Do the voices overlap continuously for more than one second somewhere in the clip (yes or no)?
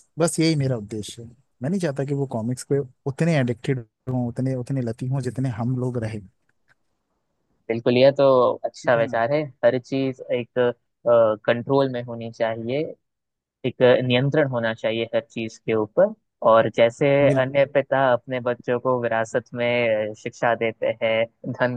no